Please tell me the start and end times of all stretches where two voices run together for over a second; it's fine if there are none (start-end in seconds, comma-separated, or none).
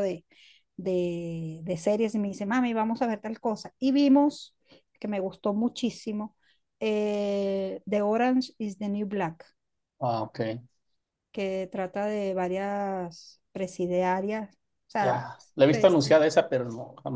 none